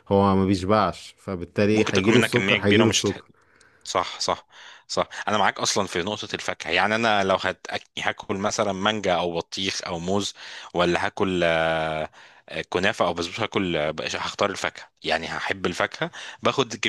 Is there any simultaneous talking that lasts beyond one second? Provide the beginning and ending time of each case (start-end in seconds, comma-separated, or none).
1.7-3.2